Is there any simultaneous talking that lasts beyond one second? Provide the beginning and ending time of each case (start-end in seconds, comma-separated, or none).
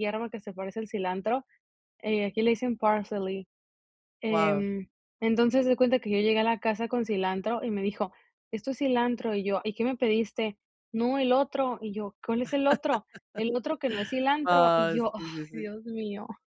14.4-15.7